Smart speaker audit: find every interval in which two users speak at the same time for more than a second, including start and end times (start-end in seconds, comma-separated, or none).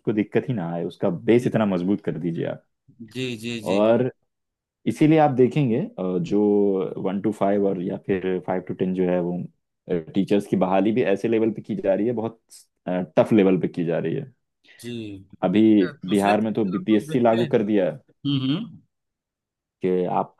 16.1-17.9